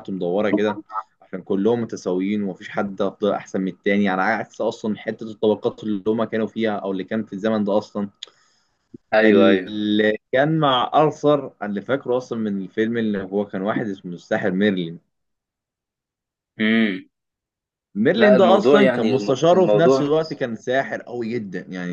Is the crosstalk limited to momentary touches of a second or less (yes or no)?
no